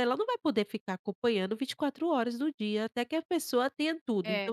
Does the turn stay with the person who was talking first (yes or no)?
yes